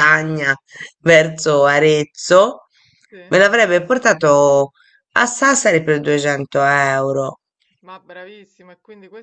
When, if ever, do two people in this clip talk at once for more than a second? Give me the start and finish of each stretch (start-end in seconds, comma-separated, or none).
none